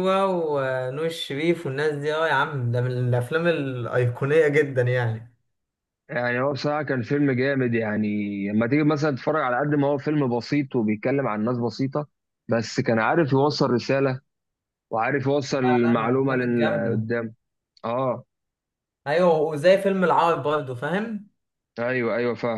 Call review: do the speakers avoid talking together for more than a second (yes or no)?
no